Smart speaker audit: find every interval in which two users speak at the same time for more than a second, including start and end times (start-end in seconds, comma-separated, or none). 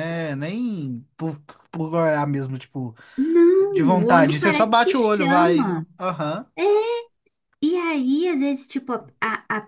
3.7-5.8